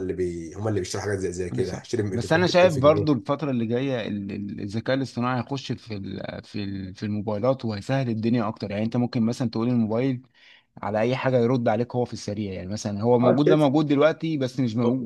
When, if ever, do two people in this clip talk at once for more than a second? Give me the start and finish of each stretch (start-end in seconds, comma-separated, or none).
1.5-3.2